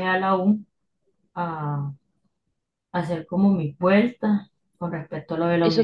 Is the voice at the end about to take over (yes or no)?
yes